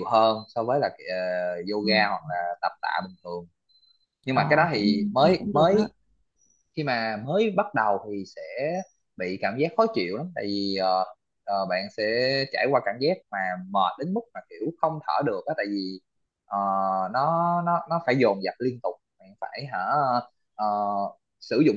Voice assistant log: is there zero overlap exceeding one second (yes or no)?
no